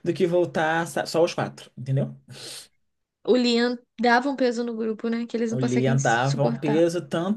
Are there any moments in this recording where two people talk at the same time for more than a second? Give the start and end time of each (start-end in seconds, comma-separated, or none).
5.5-6.8